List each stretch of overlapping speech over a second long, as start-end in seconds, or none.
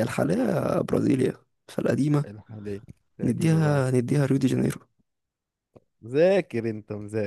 none